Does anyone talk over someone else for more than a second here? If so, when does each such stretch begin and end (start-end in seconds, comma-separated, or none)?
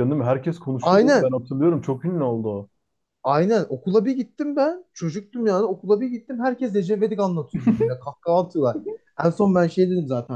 none